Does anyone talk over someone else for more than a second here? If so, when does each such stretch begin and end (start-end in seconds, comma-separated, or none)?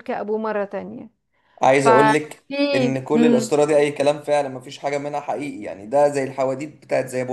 1.7-3.5